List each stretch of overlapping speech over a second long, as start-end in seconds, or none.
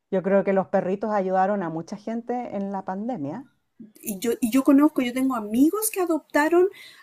none